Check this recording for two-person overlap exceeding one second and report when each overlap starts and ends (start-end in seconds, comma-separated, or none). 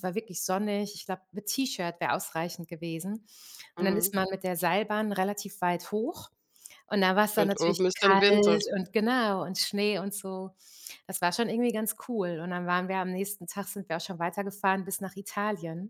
7.4-8.7